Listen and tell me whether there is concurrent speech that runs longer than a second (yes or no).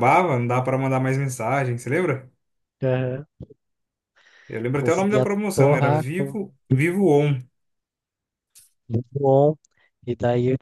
yes